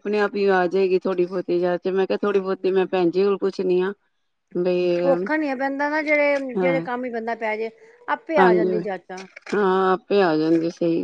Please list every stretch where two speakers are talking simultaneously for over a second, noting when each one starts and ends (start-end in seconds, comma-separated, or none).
none